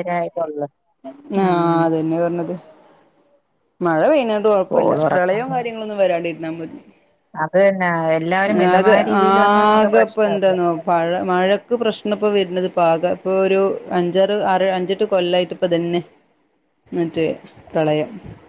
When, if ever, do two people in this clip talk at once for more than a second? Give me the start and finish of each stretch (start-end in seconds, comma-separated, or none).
8.5-10.5